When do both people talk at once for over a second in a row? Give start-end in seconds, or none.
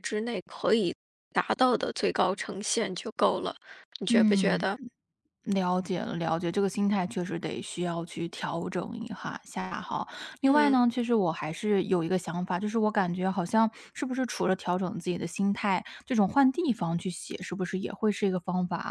none